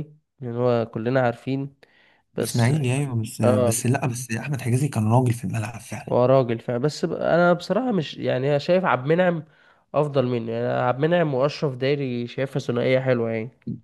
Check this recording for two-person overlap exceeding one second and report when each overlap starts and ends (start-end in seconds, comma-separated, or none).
none